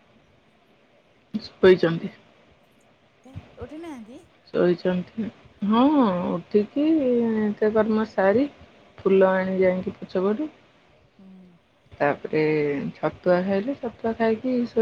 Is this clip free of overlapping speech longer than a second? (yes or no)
yes